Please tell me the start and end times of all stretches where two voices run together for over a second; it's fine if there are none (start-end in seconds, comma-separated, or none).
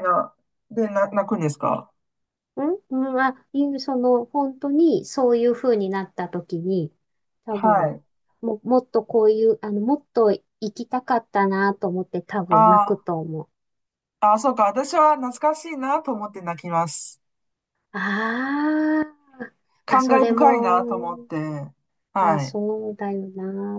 19.9-21.3